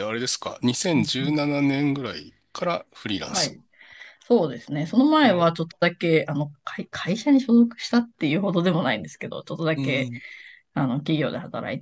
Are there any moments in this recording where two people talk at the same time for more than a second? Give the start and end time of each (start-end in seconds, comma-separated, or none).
none